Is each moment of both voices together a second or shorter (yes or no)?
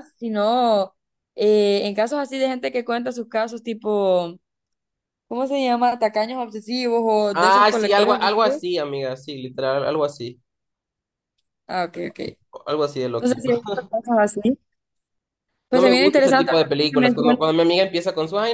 no